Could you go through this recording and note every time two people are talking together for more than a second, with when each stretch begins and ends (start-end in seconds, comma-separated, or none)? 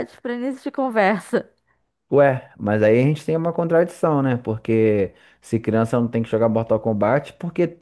none